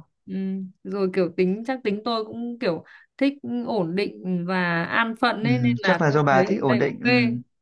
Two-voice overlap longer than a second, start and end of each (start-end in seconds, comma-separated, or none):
5.4-7.1